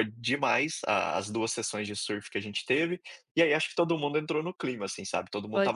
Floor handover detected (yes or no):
no